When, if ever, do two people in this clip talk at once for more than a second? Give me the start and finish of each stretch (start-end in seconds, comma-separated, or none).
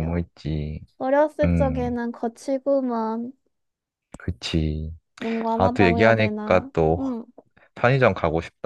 5.6-7.1